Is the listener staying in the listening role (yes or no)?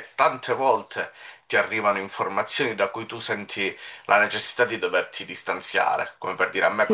yes